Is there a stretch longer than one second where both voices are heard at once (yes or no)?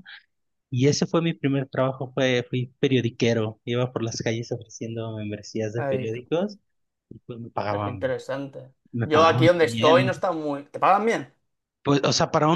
yes